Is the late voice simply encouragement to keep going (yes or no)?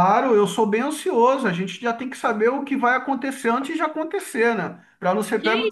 no